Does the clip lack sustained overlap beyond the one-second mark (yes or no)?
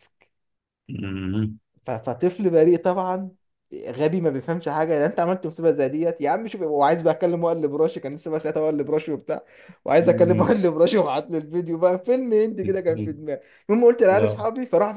yes